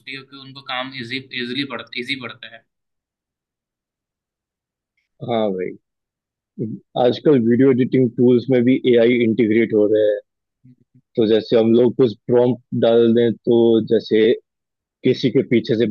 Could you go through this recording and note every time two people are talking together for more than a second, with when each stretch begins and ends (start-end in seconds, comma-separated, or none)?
none